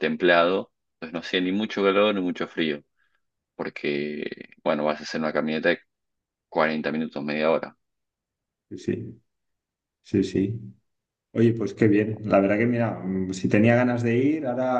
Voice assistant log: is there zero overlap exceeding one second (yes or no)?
yes